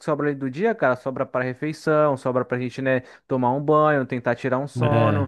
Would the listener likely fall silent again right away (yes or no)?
yes